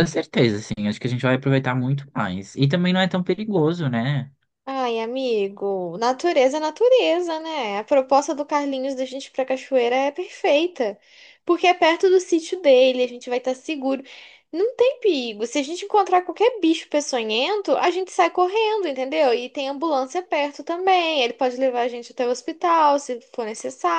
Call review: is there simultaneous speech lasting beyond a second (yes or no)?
no